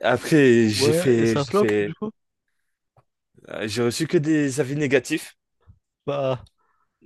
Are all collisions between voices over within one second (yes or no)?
no